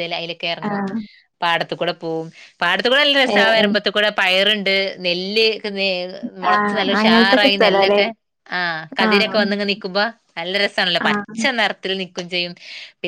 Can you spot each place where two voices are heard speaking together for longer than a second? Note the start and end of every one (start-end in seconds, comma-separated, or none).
6.5-8.0